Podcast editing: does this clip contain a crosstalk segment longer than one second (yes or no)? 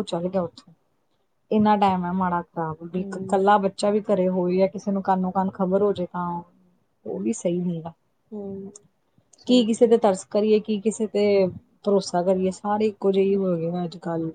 no